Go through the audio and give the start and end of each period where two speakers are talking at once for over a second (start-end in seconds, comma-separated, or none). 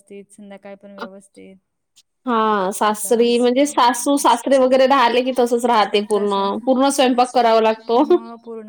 2.9-4.2